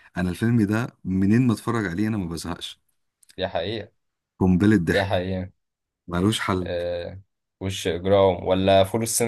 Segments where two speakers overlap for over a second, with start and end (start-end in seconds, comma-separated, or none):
none